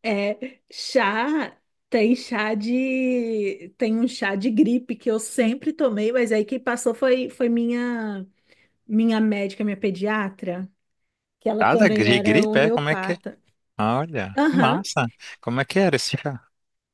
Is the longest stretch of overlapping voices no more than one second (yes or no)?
no